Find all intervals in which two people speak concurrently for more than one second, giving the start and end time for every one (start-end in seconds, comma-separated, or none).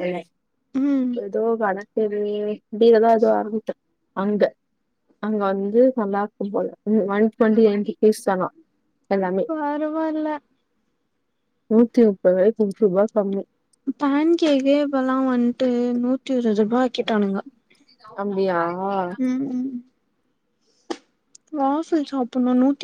none